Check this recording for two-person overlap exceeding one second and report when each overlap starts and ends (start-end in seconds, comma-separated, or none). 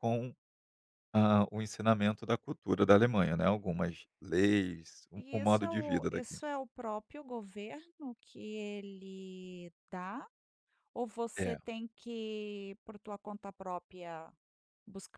5.2-6.4